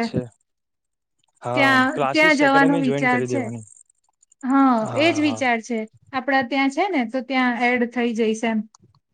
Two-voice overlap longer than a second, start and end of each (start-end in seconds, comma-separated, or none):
1.5-3.4